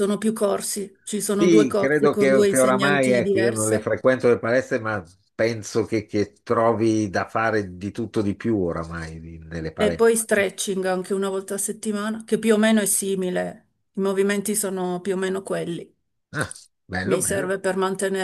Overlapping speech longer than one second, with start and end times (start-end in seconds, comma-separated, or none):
1.4-3.9